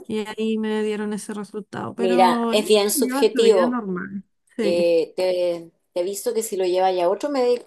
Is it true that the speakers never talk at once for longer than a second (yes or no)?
no